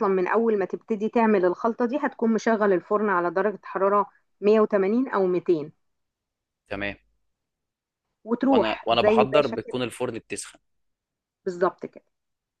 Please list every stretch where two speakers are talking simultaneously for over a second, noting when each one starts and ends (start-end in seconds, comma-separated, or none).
8.4-9.8